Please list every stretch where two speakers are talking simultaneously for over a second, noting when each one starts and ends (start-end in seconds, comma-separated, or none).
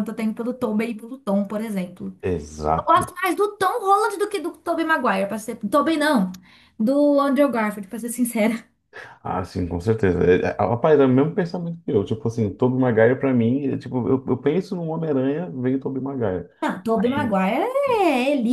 none